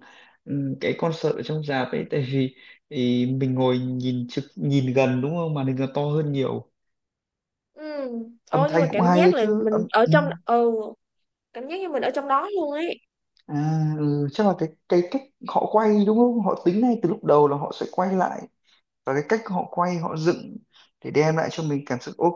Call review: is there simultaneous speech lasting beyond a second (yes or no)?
yes